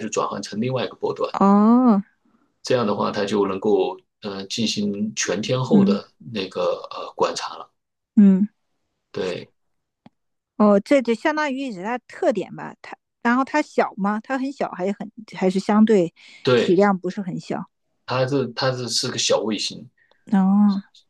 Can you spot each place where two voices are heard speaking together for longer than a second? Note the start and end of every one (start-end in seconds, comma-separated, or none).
none